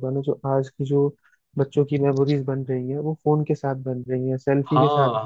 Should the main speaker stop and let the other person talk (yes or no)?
yes